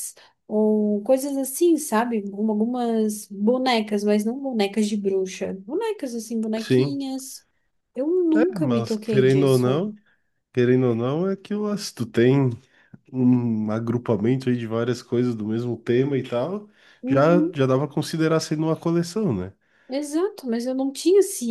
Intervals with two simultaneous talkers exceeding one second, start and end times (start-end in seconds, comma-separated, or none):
8.3-9.9